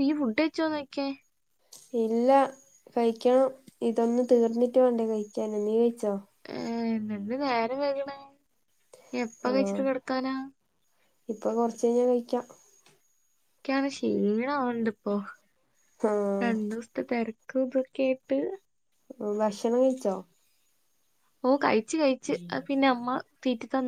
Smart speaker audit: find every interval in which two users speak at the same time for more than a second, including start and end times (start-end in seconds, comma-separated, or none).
none